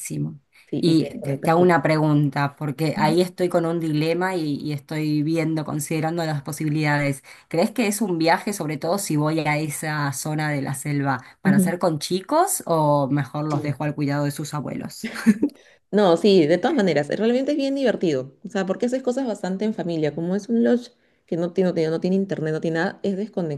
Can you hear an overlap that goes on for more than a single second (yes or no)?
yes